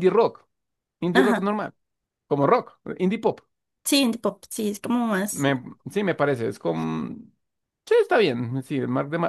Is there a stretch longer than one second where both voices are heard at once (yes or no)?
no